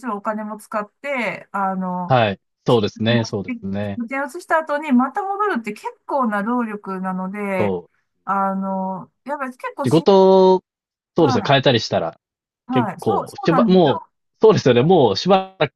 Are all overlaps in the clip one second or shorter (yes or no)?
no